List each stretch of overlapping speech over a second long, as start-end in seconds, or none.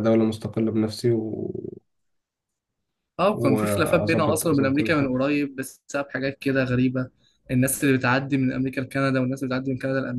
3.3-5.1